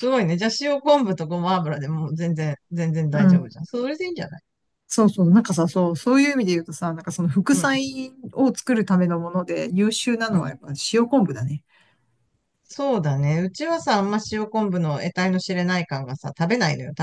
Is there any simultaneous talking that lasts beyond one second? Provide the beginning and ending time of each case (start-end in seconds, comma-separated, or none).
none